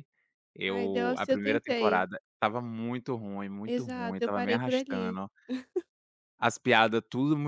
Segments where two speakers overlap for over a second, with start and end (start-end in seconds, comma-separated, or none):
0.6-2.1, 3.7-5.2